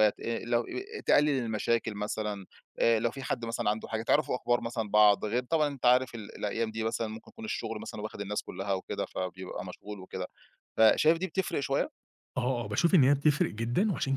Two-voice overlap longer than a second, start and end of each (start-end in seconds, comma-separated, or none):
none